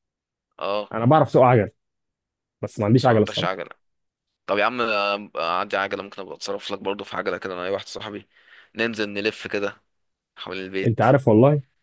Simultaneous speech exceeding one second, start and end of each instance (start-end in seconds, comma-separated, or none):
none